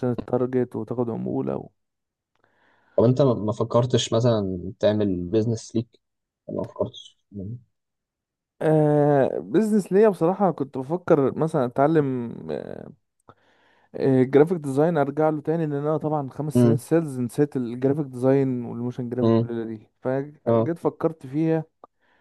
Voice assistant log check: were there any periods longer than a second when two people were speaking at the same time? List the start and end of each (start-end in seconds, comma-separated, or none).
none